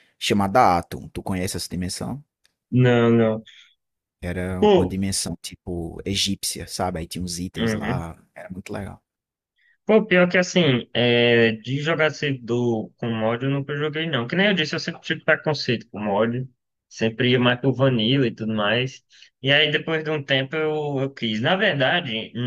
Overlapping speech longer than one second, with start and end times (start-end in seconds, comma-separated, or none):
none